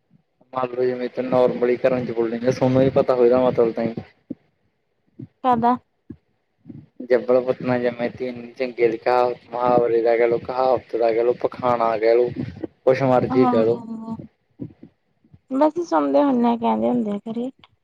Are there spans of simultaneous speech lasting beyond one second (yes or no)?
no